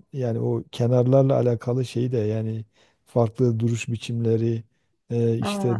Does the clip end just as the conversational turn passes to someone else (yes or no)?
no